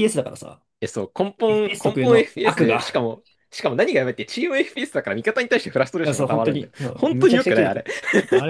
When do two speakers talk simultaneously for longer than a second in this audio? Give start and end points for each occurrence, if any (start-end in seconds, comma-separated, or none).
1.5-2.8, 6.0-7.8